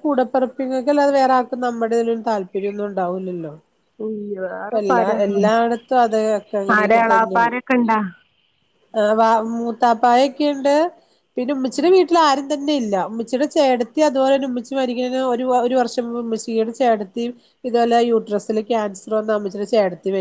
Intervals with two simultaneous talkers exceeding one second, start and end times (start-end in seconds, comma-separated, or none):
none